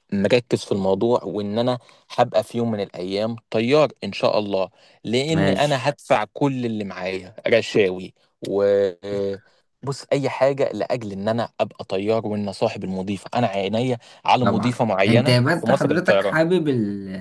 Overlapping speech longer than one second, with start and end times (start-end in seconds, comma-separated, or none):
14.4-16.4